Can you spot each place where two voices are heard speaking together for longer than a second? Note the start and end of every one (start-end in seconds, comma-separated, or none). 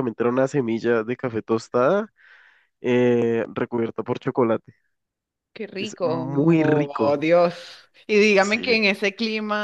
5.8-7.2